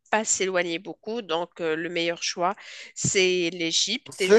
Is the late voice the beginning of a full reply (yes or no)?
yes